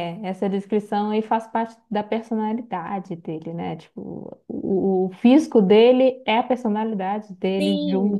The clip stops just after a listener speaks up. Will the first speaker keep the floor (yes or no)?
no